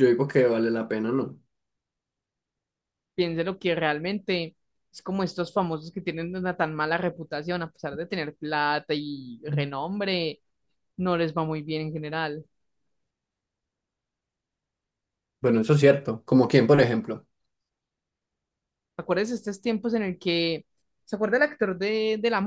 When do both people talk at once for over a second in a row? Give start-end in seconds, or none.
none